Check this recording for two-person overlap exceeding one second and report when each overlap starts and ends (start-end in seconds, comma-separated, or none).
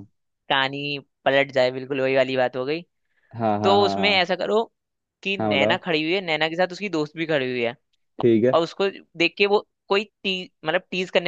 none